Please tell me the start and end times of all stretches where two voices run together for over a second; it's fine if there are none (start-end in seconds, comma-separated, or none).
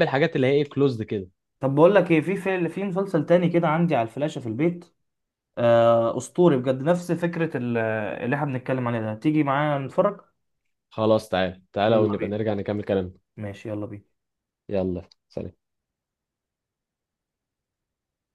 none